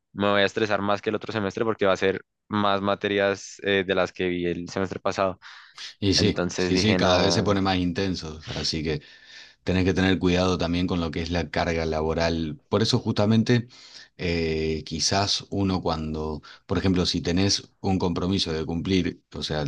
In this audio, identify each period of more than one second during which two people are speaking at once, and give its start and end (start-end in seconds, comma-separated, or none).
6.2-7.5